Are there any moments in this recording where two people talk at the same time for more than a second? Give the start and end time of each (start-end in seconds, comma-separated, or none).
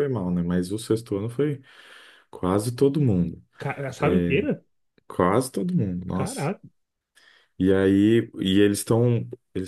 none